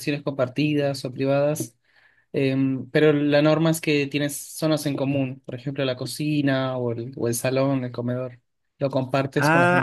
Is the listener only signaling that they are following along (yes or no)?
no